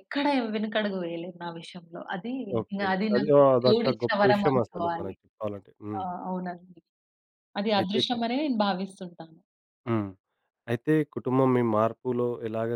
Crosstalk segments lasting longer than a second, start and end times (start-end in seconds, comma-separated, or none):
2.7-5.1